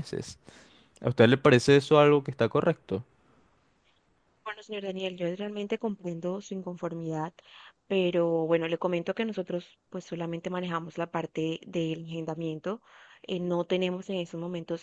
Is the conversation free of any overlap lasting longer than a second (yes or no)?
yes